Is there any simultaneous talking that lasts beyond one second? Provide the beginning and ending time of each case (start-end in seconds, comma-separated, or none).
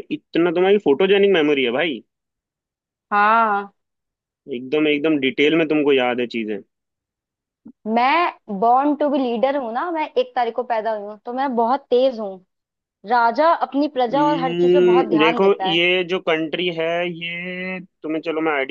14.1-15.8